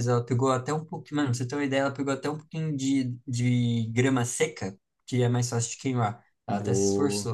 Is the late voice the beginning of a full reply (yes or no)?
yes